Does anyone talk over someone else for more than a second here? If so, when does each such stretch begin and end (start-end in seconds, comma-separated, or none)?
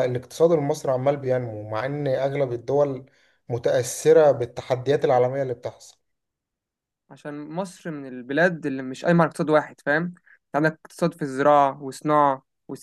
none